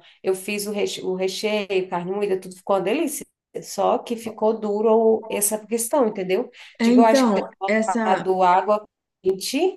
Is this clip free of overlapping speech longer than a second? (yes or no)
no